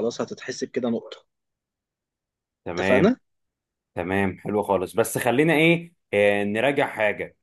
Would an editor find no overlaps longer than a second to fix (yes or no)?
yes